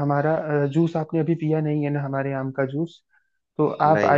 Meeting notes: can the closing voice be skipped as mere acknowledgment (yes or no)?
yes